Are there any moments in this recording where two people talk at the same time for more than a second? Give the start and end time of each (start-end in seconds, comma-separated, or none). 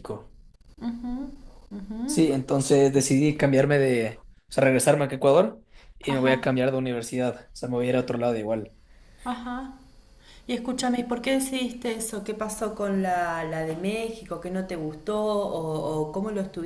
none